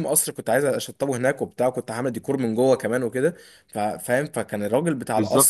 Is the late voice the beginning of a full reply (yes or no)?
no